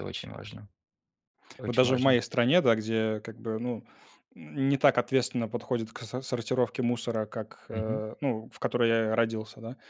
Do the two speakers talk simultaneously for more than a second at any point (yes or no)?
no